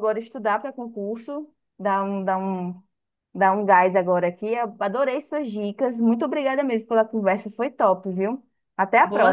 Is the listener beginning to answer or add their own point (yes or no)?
yes